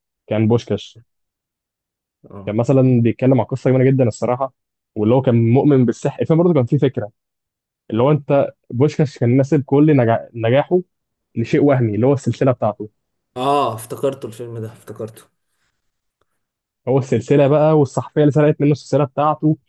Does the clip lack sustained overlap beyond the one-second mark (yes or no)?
yes